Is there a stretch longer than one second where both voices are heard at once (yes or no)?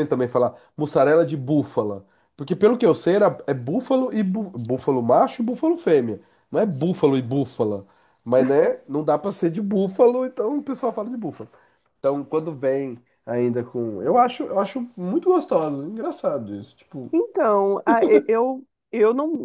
no